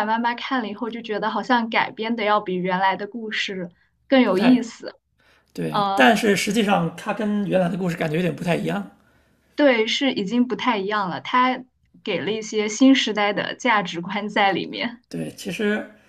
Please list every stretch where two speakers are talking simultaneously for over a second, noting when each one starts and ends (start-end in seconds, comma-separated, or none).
none